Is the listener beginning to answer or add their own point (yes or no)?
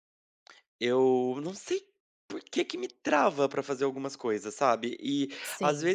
no